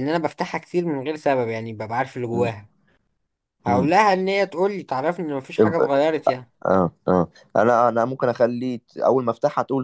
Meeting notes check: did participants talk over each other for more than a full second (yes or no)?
no